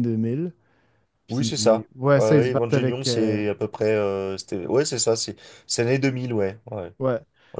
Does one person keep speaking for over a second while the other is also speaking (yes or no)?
yes